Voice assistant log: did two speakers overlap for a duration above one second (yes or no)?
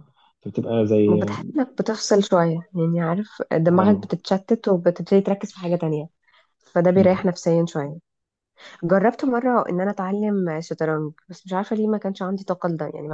no